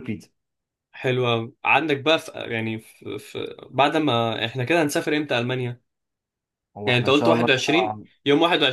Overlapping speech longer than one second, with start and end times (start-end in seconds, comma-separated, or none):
6.8-8.1